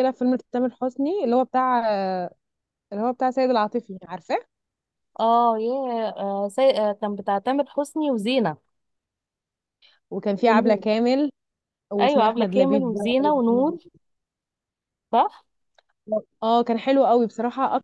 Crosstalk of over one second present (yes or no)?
yes